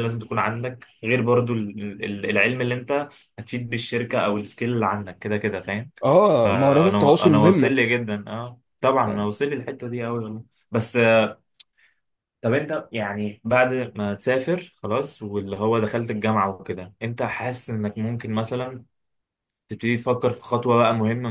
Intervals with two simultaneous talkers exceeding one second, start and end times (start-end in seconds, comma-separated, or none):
6.3-7.8